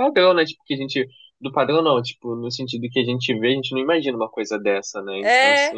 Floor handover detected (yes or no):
yes